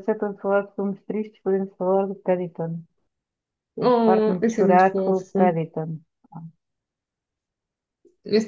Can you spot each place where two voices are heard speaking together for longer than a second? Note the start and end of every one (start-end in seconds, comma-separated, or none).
3.8-5.6